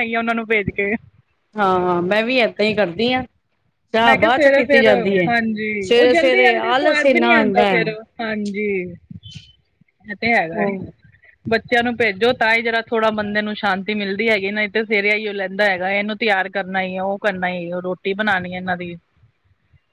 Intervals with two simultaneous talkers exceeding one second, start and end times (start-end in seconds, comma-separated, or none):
5.8-7.7